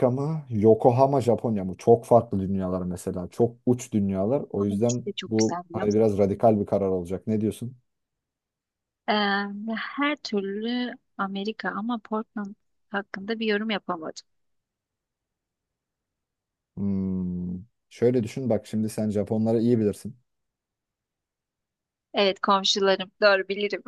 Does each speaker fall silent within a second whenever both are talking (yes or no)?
no